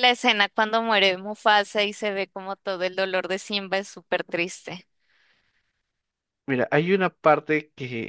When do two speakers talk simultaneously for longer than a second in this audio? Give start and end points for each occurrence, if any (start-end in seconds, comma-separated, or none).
none